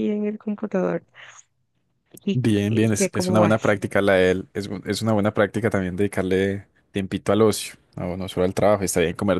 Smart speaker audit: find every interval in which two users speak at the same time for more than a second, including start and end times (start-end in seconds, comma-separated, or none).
2.3-3.8